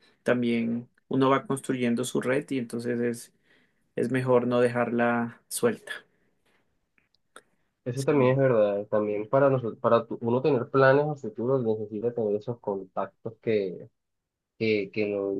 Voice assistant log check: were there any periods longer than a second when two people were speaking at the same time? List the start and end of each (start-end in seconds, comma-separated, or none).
none